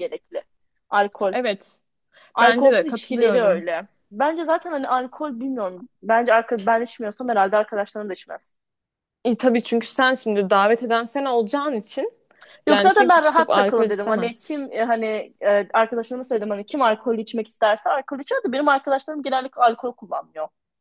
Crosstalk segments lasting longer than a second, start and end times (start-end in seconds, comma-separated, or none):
2.4-3.6, 12.7-14.5